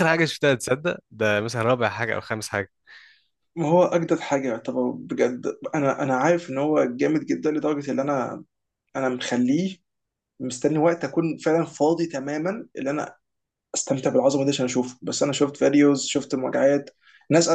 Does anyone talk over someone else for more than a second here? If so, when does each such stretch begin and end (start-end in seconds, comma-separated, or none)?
none